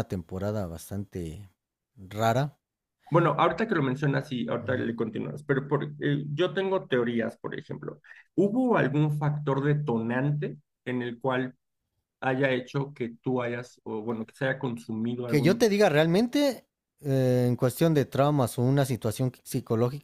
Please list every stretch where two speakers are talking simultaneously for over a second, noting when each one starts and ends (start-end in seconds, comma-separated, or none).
none